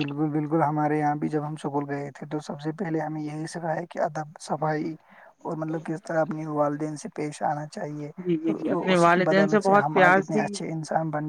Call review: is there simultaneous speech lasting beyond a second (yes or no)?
yes